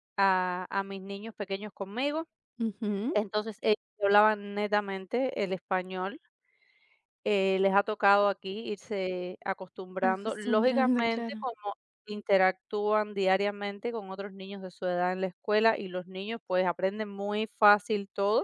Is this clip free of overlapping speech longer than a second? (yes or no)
no